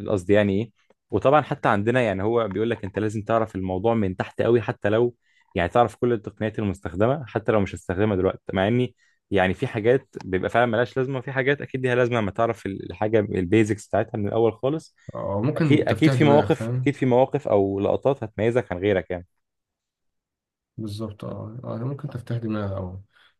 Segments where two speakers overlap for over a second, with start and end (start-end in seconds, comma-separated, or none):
15.6-17.0